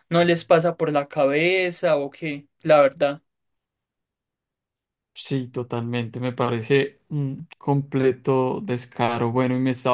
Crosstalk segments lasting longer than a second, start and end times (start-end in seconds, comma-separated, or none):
none